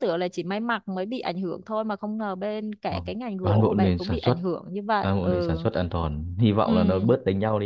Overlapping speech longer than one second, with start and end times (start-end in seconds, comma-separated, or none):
2.9-4.4